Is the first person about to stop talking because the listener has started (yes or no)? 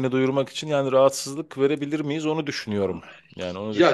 yes